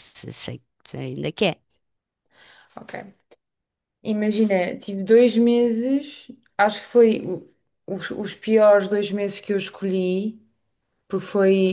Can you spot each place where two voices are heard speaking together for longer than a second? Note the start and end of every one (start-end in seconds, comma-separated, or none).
none